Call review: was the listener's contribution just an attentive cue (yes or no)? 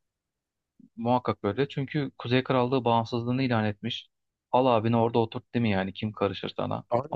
yes